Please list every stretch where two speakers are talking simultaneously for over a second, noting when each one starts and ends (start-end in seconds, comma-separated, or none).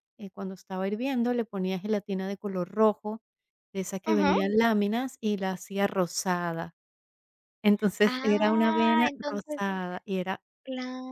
8.0-9.6